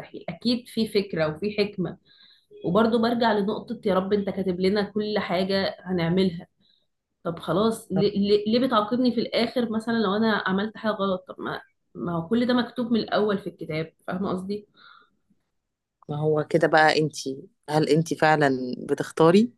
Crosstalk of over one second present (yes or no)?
no